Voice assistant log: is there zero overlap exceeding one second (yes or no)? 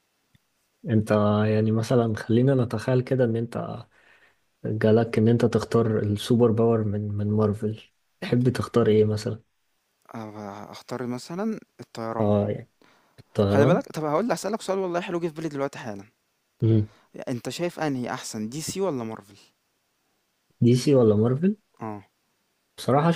yes